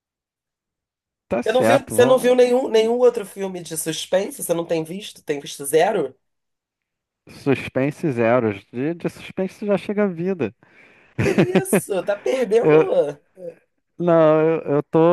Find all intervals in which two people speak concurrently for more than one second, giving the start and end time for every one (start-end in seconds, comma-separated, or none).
1.5-3.0